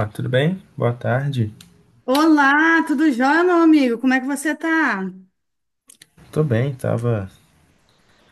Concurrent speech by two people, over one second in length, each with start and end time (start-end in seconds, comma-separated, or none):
none